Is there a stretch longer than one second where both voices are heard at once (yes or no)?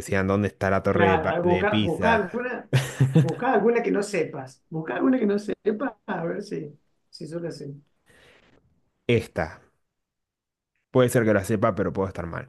yes